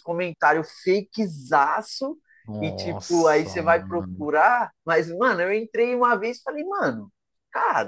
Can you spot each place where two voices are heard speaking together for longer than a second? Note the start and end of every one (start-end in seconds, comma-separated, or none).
2.6-4.3